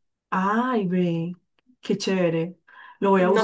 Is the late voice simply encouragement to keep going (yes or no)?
no